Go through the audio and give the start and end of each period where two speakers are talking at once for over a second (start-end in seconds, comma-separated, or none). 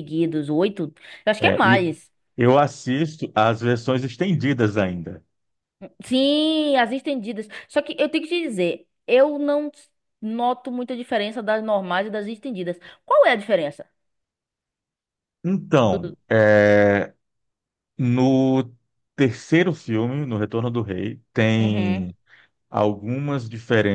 none